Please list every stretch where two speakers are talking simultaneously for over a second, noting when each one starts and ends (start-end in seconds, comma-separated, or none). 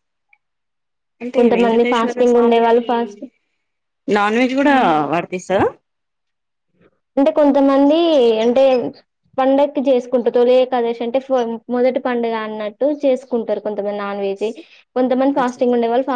1.4-2.8